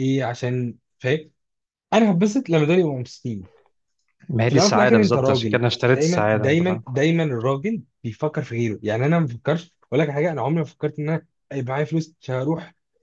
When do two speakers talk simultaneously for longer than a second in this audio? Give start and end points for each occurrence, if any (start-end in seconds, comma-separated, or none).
4.5-6.8